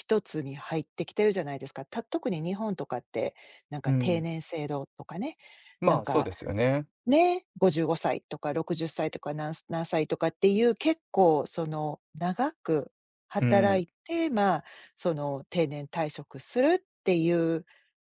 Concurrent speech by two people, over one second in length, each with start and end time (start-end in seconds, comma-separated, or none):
none